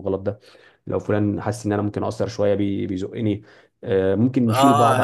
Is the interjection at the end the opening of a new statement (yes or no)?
yes